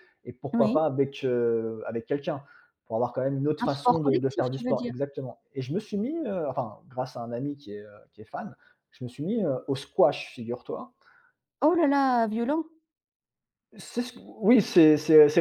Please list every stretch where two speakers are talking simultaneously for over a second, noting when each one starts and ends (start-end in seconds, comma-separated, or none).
3.6-4.9